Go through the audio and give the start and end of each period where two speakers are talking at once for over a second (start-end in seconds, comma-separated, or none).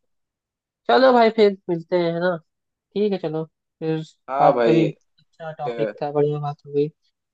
4.4-5.9